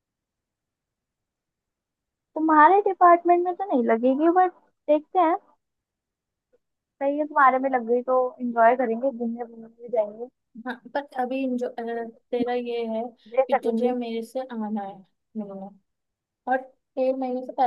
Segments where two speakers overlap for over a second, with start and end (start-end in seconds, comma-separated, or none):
none